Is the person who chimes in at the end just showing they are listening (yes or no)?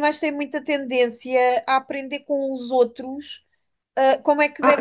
no